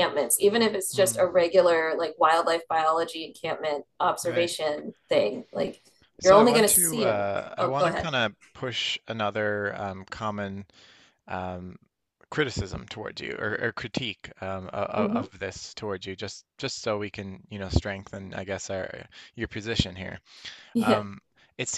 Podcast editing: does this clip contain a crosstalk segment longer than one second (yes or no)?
yes